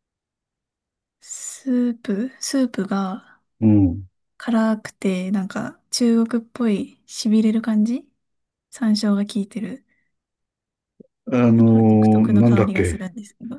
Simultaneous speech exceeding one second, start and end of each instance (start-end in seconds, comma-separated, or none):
11.6-13.0